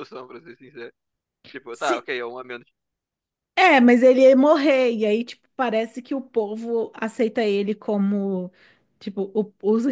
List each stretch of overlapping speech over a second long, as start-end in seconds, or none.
none